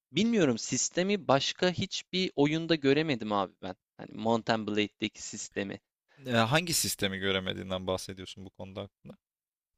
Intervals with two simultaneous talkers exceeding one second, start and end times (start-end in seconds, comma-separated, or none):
none